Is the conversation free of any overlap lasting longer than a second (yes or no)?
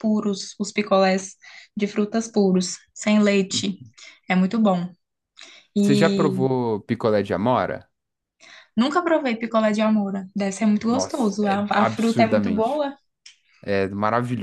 no